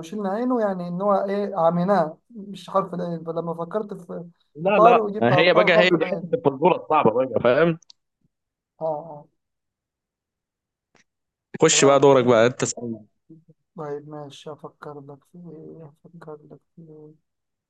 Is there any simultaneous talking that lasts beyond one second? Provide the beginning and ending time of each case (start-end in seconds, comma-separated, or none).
4.7-6.4